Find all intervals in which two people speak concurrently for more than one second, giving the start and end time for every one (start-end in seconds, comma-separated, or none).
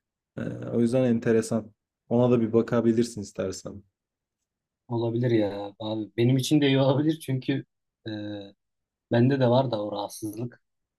none